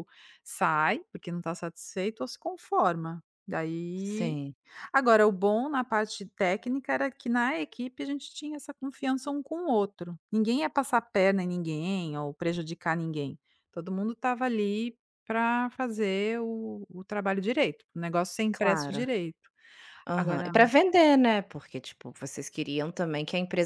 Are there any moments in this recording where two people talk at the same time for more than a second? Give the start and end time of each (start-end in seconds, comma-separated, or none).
none